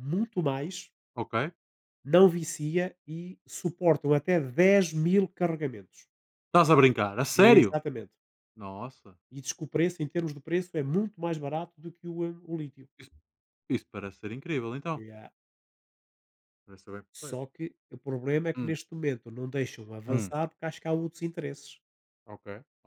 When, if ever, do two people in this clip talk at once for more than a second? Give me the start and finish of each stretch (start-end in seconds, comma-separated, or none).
none